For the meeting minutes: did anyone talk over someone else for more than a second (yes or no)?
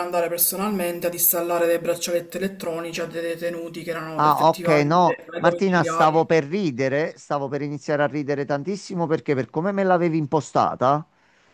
yes